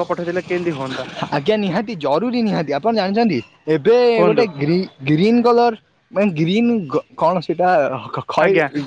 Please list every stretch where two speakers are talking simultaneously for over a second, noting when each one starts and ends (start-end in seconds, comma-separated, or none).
none